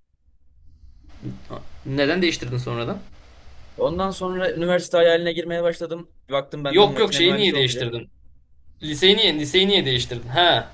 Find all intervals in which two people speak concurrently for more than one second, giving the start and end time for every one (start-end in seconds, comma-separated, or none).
6.7-7.9